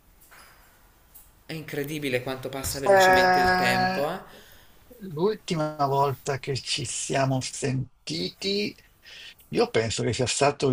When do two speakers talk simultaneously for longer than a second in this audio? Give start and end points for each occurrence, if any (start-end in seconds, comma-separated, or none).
2.9-4.1